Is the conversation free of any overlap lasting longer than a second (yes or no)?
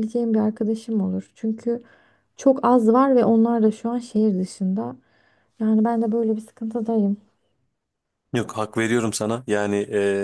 yes